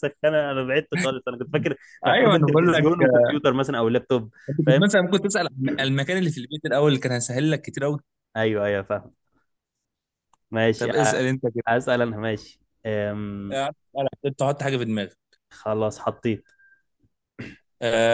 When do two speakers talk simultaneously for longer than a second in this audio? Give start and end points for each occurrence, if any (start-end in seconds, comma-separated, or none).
2.0-3.3